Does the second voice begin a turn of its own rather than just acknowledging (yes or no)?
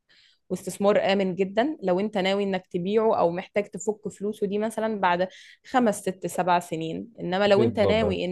no